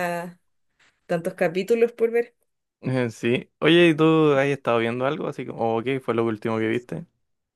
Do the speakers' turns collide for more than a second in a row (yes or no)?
no